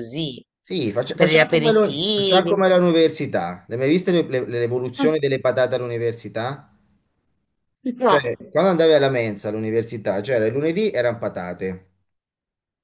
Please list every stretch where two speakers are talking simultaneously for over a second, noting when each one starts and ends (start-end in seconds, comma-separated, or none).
1.1-2.6